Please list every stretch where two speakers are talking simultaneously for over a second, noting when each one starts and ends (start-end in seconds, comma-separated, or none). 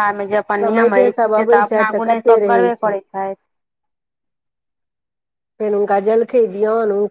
0.6-2.9